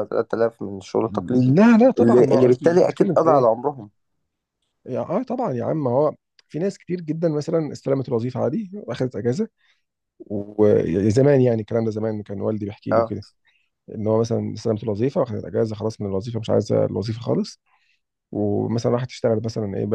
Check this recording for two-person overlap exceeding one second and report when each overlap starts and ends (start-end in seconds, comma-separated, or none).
2.0-3.5